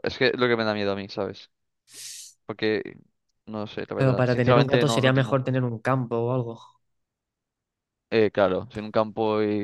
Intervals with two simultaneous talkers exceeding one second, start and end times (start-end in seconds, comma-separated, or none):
3.9-5.4